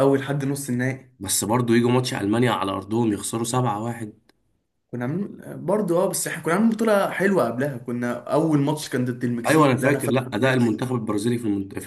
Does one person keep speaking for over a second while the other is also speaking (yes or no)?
yes